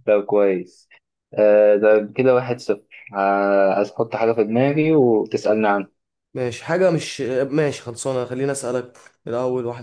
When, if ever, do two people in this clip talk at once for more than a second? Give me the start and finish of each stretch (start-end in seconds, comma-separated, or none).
none